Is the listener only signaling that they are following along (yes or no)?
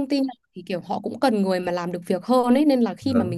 yes